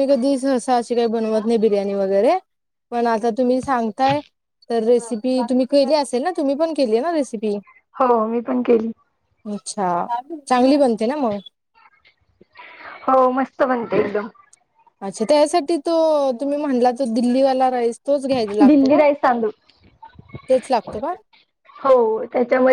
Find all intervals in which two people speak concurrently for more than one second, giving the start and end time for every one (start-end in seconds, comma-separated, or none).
none